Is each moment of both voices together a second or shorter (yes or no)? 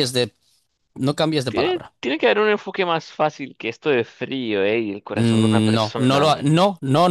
no